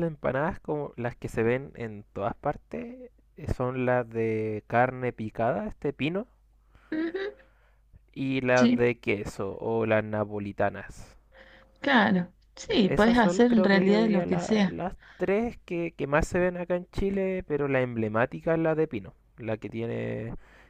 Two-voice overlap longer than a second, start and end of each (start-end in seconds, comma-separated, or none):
12.8-14.8